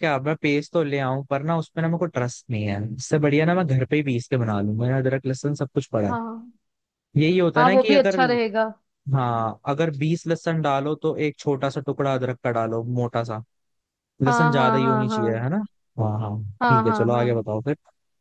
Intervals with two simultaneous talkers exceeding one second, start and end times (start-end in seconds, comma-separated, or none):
14.3-15.5